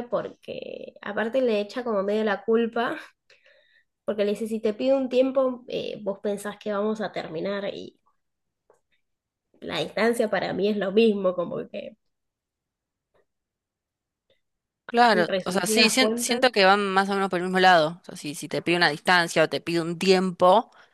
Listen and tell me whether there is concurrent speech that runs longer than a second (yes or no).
yes